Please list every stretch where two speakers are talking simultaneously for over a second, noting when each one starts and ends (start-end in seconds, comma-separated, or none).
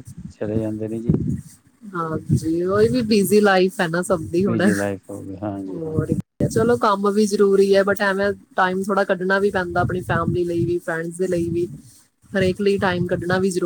none